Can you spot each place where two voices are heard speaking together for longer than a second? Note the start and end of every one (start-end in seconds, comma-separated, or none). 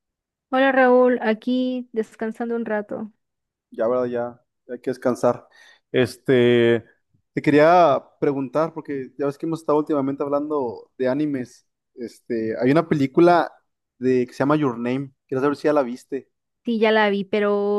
none